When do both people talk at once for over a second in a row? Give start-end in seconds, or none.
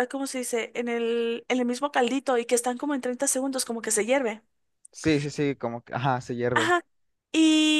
none